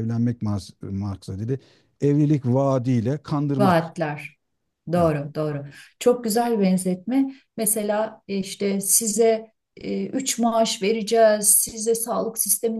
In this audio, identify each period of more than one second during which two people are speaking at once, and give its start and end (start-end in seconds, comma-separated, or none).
none